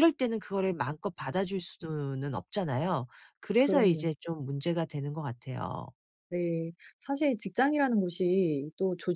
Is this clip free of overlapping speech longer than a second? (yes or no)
yes